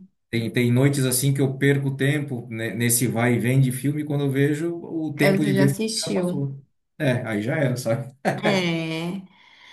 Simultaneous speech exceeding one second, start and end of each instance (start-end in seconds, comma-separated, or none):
5.2-6.4